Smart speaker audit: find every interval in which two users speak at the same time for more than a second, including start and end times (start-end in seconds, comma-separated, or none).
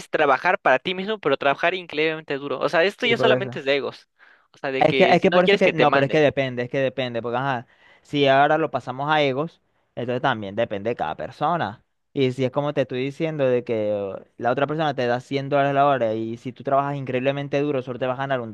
4.8-6.2